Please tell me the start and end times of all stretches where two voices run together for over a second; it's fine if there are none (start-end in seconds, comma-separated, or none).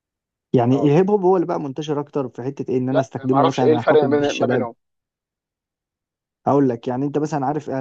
2.9-4.7